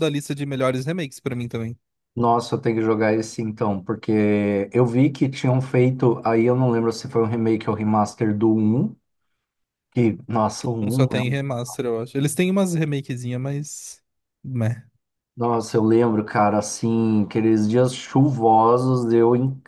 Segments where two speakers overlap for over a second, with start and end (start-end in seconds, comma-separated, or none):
none